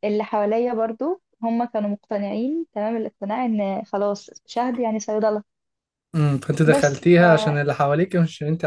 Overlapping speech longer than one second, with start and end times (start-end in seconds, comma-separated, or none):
none